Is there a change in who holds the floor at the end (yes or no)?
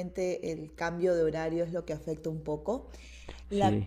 no